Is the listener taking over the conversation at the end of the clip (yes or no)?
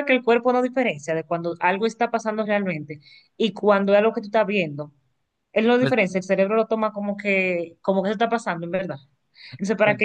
no